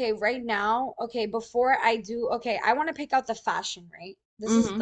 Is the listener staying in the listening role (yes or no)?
yes